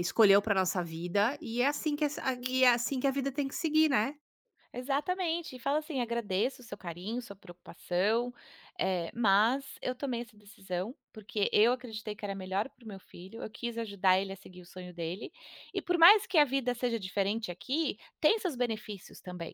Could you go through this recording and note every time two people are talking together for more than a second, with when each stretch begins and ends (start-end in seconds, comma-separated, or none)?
none